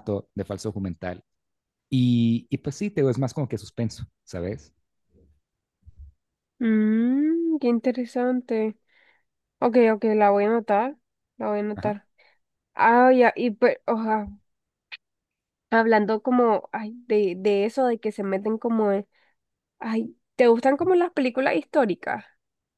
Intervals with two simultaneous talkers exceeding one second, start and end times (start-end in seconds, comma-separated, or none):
none